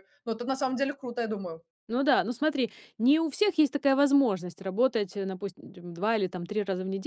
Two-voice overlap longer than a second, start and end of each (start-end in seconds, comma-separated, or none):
none